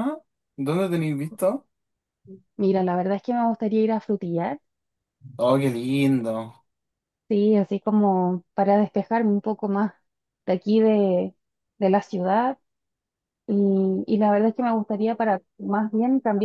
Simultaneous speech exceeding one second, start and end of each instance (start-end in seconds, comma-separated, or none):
none